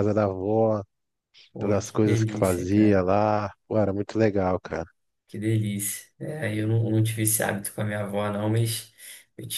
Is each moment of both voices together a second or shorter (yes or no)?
no